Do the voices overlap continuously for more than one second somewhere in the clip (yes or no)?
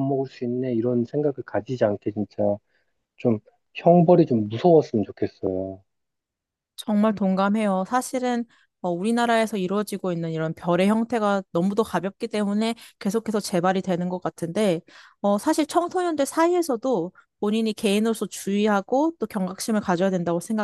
no